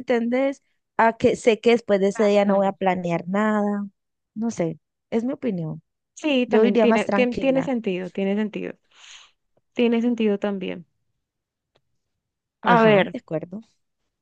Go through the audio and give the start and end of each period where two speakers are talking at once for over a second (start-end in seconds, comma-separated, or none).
6.5-7.7